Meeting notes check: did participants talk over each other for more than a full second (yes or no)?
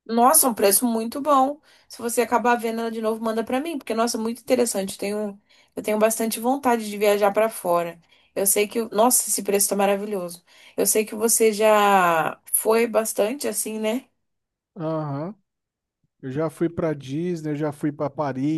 no